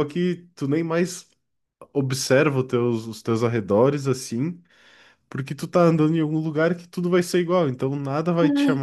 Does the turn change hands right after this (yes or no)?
no